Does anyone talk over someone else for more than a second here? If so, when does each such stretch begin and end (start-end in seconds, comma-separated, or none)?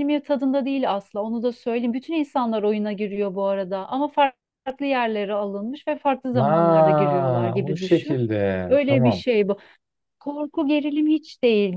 6.4-8.2